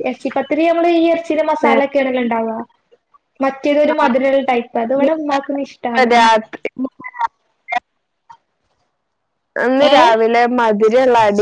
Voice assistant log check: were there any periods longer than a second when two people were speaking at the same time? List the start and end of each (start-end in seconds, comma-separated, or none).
none